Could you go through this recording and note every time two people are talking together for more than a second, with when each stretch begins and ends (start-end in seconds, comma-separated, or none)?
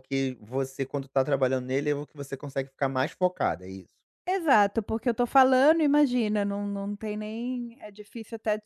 none